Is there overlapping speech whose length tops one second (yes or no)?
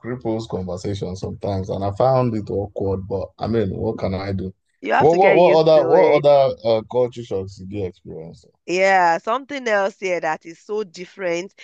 yes